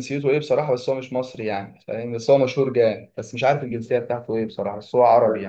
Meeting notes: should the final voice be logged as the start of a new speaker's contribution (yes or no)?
yes